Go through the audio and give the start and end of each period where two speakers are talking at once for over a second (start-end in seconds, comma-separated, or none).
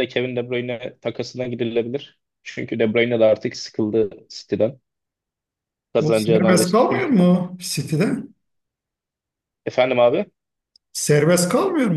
6.0-7.3